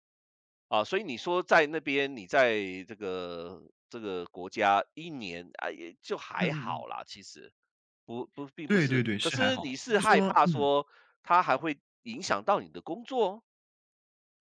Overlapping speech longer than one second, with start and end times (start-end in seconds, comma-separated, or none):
8.7-10.7